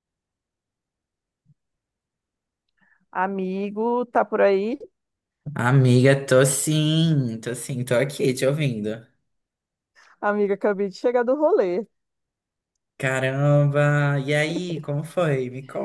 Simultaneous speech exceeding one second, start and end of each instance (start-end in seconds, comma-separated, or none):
none